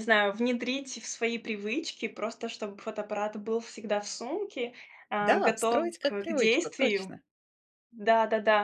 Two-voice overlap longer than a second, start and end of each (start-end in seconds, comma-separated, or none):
5.2-7.2